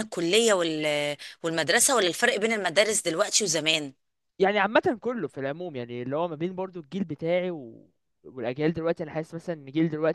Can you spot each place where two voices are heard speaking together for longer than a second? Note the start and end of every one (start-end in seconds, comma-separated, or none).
none